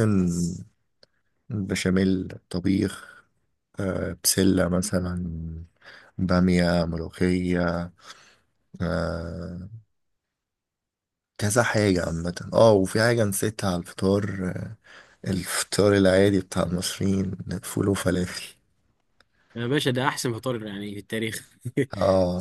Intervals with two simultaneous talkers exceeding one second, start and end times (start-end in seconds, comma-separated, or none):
none